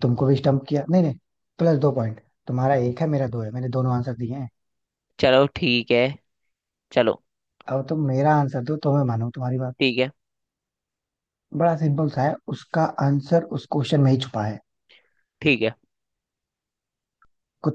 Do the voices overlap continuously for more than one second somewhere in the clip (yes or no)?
no